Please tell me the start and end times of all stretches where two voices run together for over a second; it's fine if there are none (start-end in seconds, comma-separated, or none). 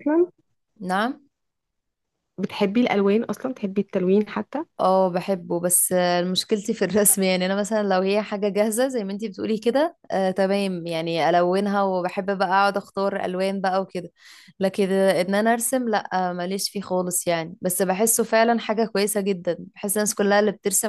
none